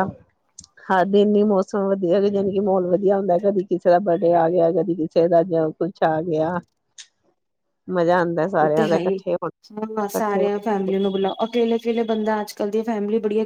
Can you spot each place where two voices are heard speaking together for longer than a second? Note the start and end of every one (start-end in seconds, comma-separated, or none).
none